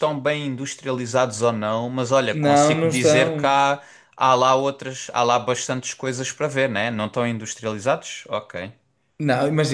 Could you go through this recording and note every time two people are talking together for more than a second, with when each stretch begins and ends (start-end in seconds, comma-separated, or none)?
2.3-3.6